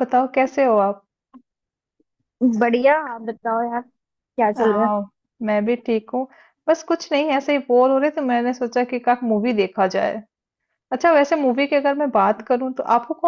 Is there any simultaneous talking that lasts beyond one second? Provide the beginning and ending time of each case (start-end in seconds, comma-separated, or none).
none